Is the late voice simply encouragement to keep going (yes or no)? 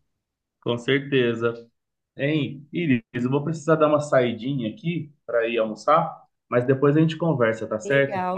no